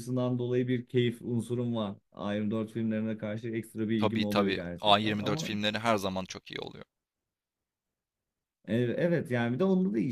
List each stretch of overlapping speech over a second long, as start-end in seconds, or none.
4.0-5.5